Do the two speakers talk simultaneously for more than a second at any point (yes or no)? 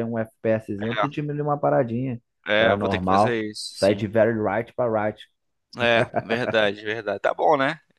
yes